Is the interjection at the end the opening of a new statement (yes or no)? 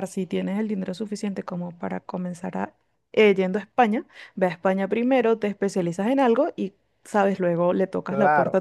yes